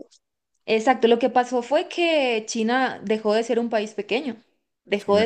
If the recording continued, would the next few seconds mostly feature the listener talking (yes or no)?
yes